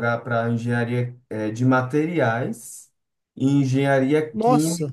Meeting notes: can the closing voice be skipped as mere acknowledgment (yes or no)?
yes